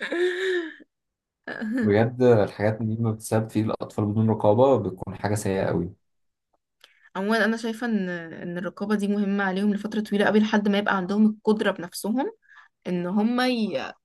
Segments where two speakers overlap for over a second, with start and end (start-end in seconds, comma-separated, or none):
none